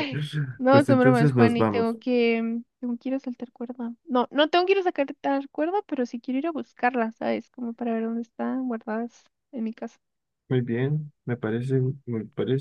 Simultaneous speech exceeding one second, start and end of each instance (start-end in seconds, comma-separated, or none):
0.7-2.0